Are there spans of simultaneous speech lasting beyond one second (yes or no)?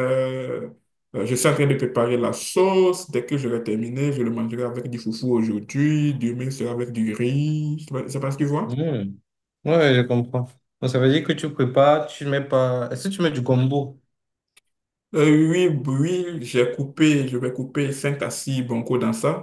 no